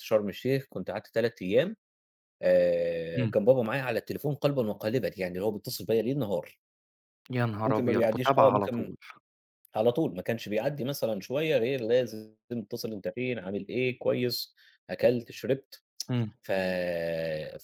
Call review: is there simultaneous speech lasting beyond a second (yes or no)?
yes